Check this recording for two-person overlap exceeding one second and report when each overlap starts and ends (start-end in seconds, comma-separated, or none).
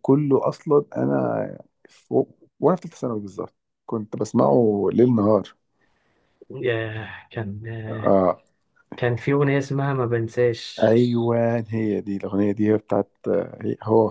none